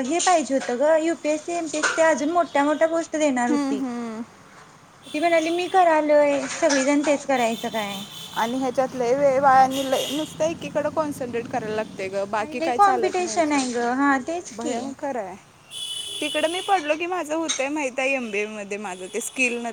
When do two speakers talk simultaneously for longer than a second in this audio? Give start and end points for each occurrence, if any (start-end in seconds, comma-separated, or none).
12.4-13.6